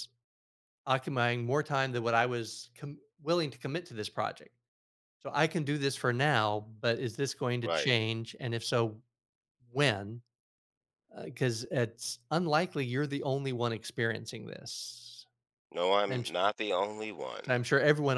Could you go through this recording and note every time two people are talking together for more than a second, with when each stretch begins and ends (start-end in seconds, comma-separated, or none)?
none